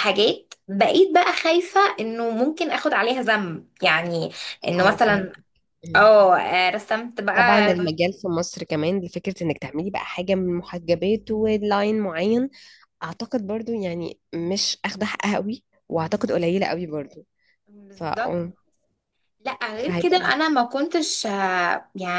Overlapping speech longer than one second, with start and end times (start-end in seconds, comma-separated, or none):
none